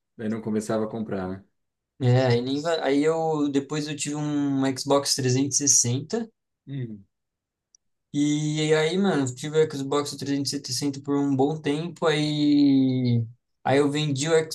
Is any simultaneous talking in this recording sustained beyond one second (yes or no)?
no